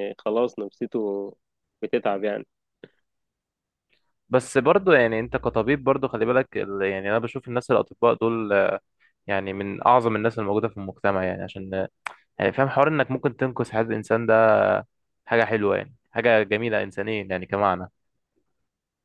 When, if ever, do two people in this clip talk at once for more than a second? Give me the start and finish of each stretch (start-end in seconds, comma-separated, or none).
none